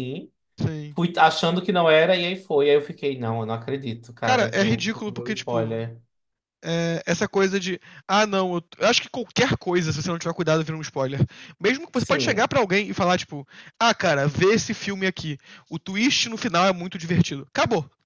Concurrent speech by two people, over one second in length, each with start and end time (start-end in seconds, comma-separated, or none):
4.2-5.8